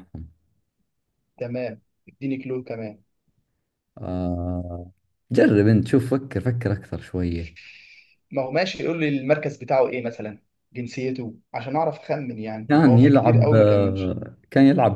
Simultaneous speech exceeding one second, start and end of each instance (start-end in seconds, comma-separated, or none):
12.7-14.2